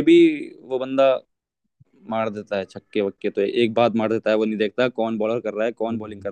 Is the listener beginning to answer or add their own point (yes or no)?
yes